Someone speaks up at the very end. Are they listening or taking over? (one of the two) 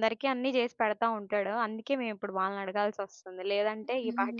taking over